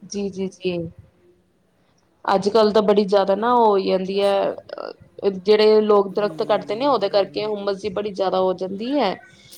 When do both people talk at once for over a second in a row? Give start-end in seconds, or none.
6.2-7.5